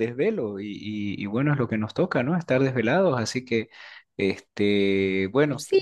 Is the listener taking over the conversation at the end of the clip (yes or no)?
yes